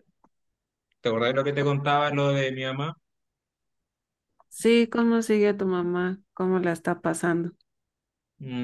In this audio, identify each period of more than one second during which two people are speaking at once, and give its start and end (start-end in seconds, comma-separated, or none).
none